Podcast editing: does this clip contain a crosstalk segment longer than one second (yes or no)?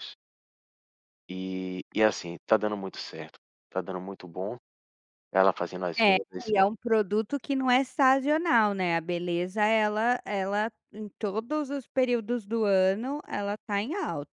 no